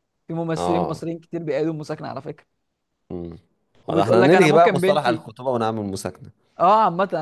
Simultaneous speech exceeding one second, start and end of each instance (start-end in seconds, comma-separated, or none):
3.9-5.2